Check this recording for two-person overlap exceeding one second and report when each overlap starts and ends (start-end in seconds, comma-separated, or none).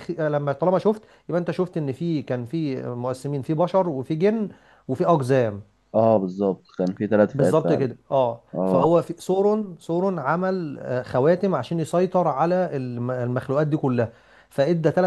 none